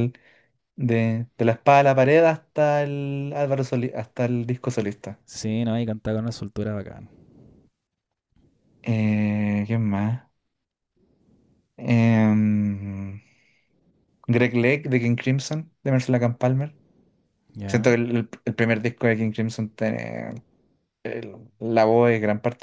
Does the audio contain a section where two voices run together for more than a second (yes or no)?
no